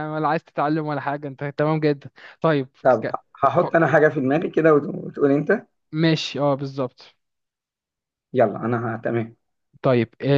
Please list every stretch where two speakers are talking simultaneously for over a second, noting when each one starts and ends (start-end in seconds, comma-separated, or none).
none